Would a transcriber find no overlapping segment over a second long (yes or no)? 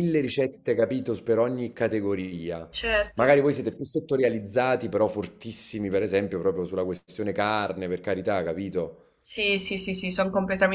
yes